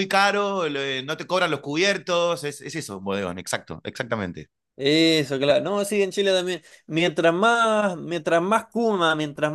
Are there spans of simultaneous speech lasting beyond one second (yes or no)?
no